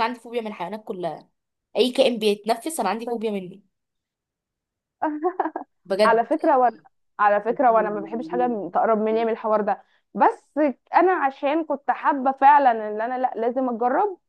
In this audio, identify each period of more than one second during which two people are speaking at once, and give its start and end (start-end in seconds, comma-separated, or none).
none